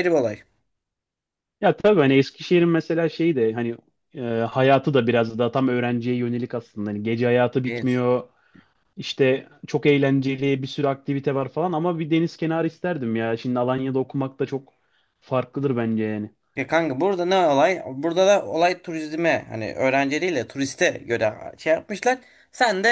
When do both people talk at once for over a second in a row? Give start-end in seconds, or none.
none